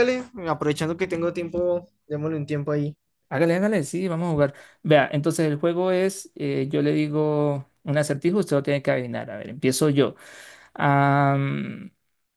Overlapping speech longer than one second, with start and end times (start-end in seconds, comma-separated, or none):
none